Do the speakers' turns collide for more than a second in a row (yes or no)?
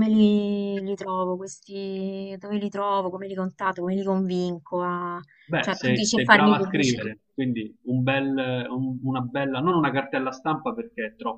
yes